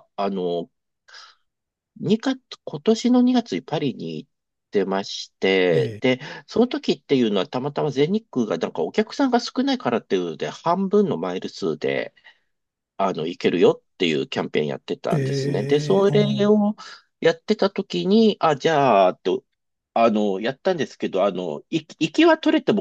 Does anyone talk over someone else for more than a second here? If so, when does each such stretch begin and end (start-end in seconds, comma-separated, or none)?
15.1-16.5